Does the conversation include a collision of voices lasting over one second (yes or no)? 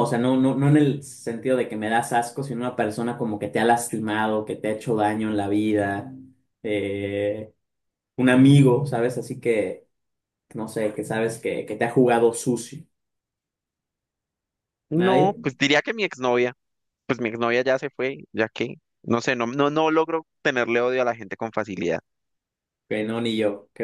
no